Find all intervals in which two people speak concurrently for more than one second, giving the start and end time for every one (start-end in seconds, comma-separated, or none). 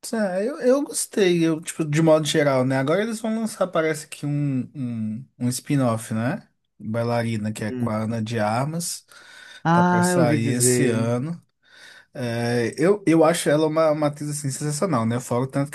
9.7-11.1